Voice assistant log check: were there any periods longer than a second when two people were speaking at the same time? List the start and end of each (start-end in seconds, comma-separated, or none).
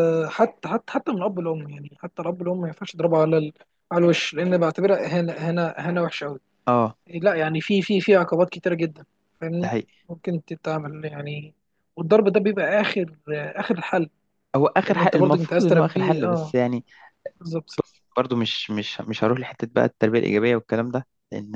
14.9-16.5